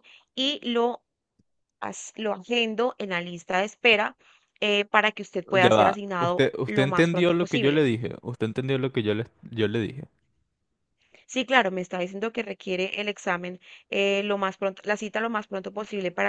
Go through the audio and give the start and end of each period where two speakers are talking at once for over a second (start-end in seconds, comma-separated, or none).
5.6-7.8